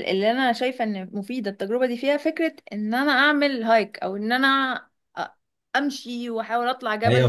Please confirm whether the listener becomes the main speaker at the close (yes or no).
yes